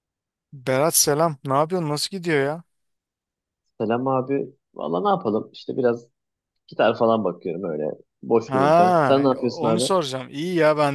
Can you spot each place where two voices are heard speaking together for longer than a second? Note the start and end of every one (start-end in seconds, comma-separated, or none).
8.4-9.9